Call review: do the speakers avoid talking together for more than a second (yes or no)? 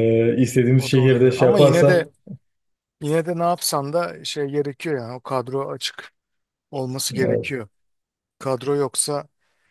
no